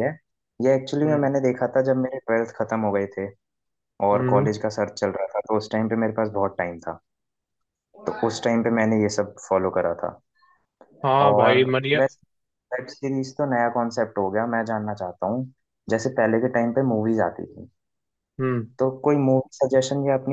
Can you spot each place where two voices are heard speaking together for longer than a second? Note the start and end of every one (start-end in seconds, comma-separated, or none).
none